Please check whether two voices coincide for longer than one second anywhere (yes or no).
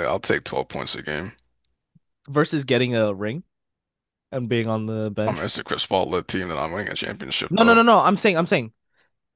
no